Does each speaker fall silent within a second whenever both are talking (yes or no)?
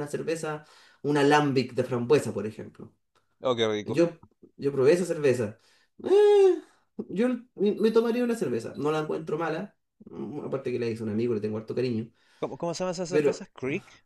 yes